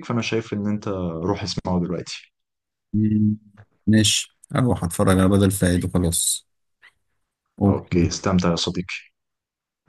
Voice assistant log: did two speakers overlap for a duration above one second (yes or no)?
no